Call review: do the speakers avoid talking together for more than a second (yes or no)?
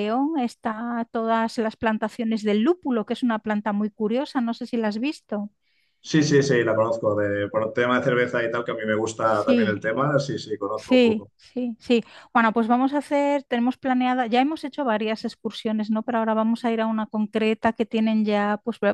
yes